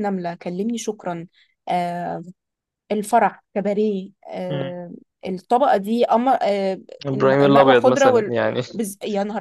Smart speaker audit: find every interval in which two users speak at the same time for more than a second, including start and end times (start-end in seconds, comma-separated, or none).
7.0-8.3